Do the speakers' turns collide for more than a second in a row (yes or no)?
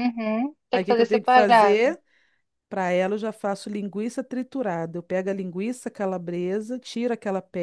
yes